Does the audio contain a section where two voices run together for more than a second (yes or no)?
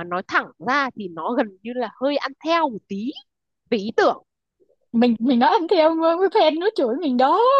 no